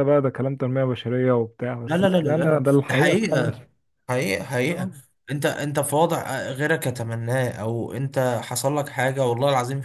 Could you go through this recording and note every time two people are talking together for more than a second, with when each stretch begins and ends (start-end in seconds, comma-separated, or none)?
1.9-3.5